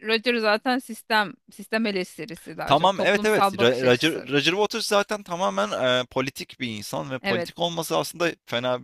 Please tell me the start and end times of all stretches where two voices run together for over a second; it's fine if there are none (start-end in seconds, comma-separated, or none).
2.6-4.3